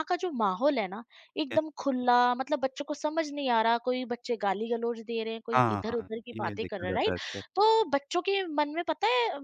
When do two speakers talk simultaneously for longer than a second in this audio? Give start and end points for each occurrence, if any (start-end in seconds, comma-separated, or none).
5.5-7.1